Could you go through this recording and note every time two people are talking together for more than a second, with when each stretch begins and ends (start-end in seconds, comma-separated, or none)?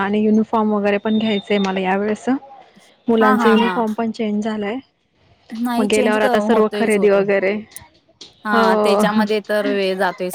none